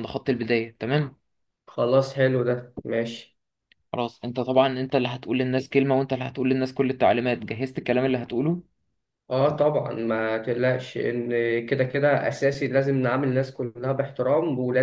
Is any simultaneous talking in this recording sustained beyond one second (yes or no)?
no